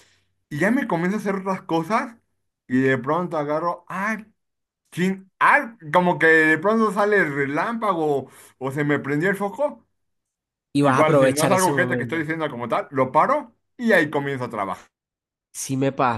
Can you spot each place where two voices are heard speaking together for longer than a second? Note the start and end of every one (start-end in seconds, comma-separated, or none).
10.8-12.2